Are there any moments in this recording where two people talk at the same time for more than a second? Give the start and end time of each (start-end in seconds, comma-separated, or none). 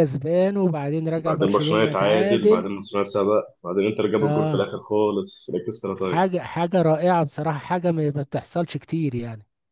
1.1-2.7